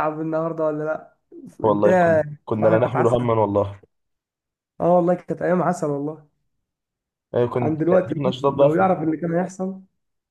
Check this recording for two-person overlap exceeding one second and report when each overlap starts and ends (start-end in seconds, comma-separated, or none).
1.6-3.3, 7.5-9.1